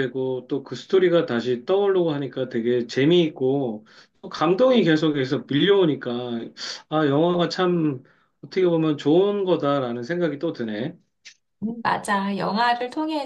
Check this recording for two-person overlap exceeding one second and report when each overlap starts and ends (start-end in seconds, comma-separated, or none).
none